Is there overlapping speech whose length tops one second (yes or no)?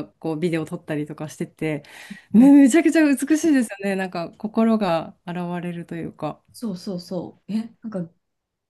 no